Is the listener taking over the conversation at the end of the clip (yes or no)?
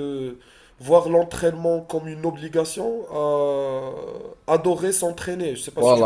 yes